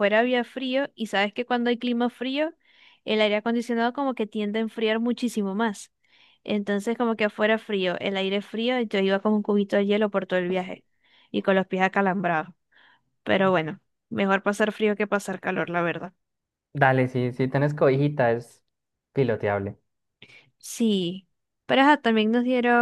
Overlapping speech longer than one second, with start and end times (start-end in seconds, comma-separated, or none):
none